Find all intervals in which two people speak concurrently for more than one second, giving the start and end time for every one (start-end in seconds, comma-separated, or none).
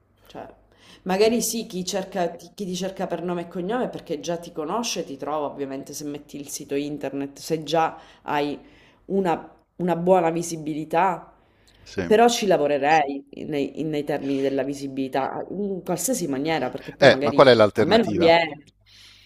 17.0-18.3